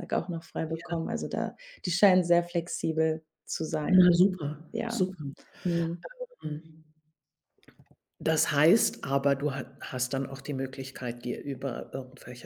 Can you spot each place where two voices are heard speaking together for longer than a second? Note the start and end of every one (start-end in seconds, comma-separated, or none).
none